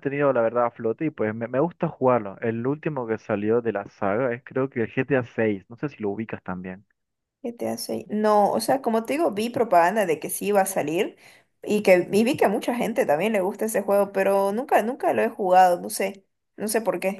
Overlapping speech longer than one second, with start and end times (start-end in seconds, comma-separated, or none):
none